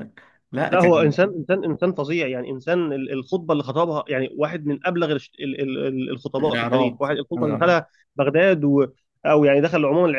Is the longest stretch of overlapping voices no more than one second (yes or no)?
no